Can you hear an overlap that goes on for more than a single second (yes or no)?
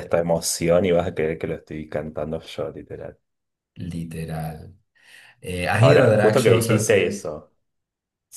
yes